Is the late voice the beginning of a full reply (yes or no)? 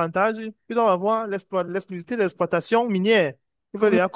no